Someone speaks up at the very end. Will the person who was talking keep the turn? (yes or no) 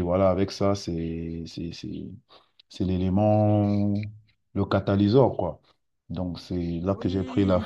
yes